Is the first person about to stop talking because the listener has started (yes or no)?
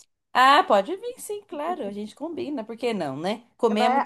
yes